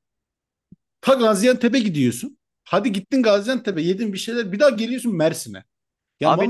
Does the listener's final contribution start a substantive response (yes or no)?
yes